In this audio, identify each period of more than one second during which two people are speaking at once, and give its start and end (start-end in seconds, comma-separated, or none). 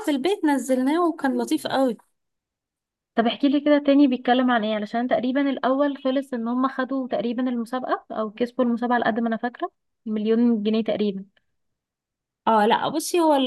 none